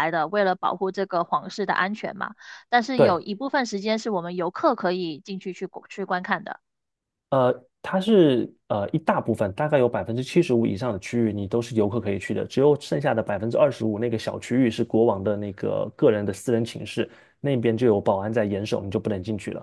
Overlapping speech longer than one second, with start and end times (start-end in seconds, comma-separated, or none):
none